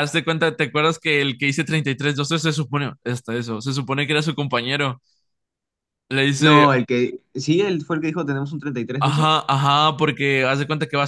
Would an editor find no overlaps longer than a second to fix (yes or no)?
yes